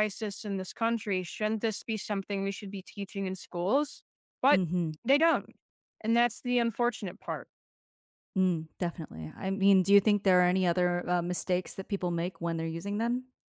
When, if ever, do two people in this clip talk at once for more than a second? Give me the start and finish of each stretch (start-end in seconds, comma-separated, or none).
none